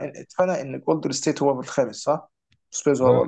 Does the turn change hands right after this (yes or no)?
yes